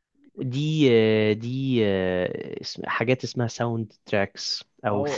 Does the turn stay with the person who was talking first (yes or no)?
no